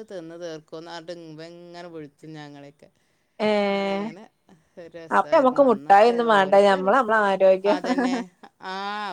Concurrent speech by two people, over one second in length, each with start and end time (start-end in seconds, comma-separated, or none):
5.2-6.8